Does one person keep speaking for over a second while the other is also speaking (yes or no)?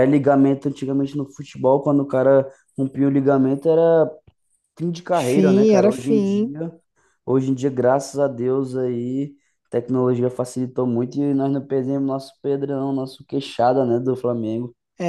yes